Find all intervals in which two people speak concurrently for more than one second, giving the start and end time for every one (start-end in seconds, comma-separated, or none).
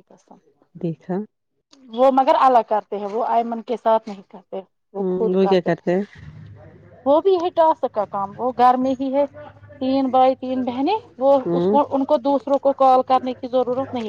none